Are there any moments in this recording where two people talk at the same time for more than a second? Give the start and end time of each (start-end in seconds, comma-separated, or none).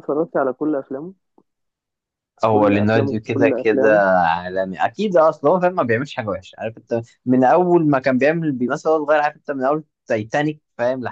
2.5-4.0